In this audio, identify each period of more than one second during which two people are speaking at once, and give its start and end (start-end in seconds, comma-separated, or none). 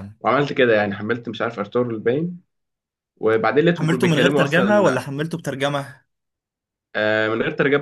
3.8-5.1